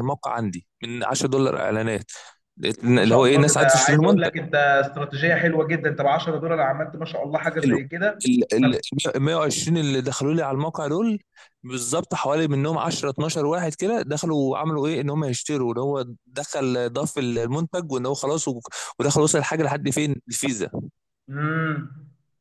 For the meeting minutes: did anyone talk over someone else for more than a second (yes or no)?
yes